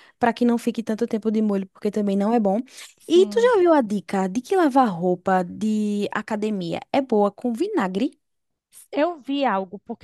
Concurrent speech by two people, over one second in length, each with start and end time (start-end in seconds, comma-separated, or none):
none